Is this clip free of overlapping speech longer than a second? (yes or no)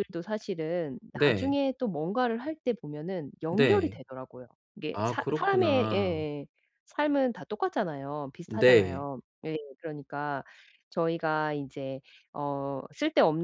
no